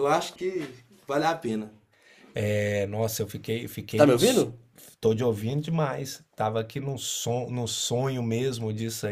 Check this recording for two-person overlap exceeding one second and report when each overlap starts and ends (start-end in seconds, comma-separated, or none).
none